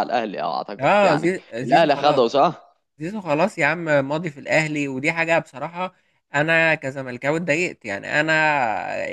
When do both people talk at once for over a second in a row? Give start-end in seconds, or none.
0.8-2.2